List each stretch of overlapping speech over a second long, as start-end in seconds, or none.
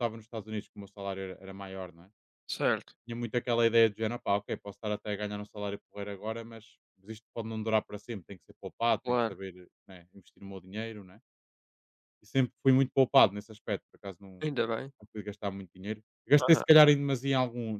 none